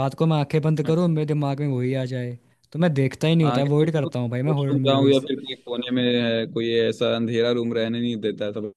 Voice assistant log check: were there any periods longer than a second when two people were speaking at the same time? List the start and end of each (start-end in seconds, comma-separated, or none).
3.4-5.2